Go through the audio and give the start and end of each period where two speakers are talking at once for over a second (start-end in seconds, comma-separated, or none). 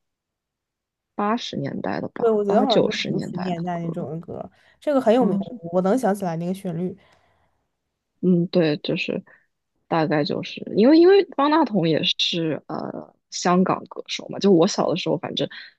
2.2-4.0